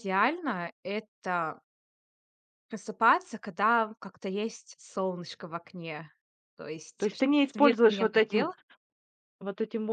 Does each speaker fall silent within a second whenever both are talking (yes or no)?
no